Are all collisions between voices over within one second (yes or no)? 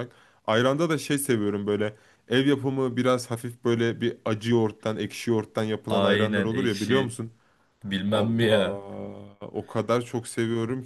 no